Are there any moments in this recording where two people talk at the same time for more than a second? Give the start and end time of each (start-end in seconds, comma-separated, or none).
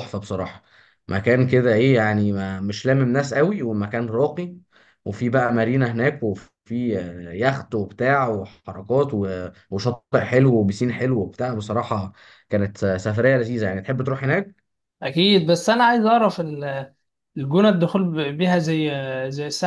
none